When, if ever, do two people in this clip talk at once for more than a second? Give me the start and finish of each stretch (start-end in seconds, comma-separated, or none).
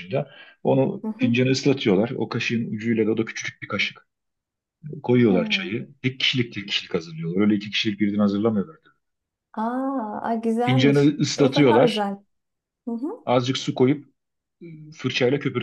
10.6-12.1